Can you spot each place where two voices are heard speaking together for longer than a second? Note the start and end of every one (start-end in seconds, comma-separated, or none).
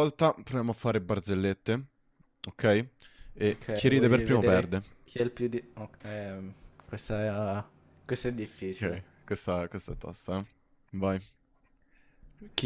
3.5-4.8